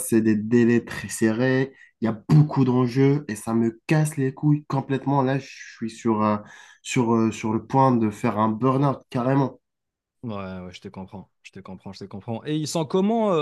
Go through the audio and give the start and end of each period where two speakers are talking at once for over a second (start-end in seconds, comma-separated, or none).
none